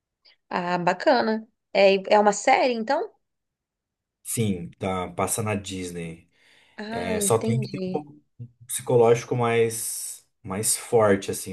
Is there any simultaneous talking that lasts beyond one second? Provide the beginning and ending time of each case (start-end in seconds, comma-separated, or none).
6.9-8.1